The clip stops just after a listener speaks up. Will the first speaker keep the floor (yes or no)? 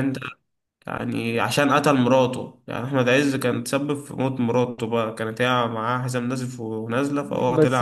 no